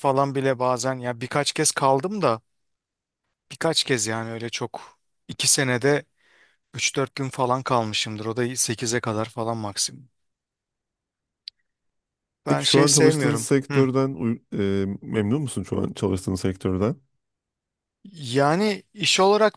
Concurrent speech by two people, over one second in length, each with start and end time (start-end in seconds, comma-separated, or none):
12.5-13.9